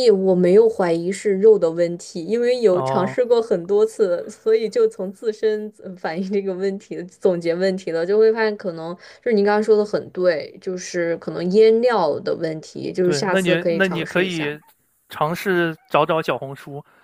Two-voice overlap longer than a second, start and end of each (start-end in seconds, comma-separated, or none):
13.0-14.5